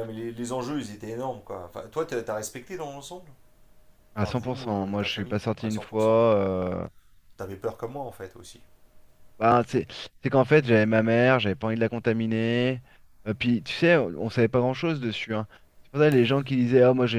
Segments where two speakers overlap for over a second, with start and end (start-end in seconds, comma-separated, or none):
4.2-6.2